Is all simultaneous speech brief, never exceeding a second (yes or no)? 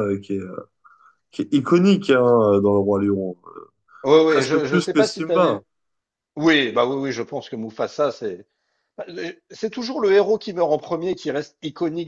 no